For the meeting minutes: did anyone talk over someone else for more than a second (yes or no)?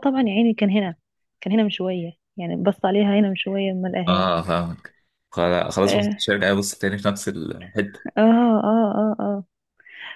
no